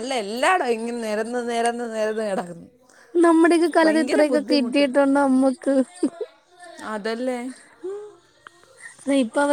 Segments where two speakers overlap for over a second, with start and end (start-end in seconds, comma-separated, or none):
none